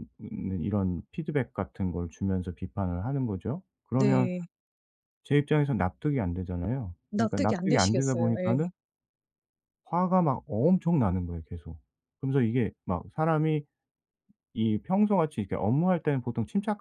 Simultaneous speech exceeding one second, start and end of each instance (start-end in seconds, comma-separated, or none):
7.1-8.7